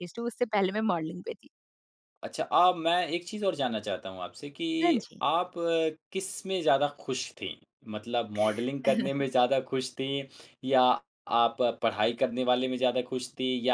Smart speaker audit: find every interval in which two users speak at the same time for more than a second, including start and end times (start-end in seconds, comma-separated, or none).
none